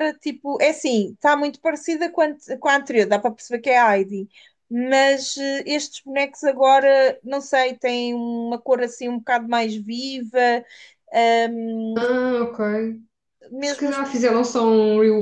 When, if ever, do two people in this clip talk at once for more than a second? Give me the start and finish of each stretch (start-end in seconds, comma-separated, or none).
none